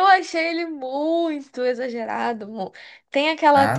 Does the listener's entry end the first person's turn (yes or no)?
no